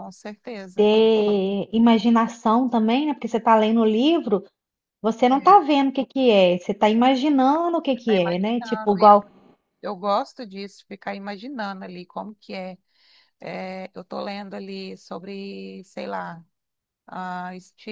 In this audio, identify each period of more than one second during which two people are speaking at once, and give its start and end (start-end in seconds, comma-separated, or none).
8.0-9.2